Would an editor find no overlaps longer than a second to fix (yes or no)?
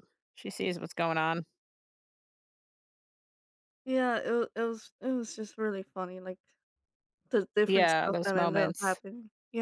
no